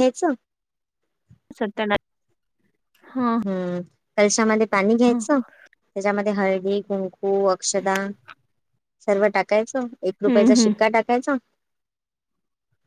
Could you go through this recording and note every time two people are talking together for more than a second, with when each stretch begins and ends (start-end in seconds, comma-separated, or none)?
none